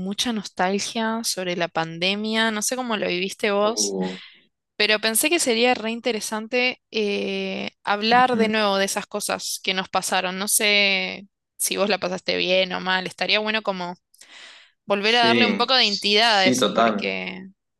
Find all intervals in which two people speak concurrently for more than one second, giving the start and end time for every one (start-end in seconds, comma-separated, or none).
15.0-17.2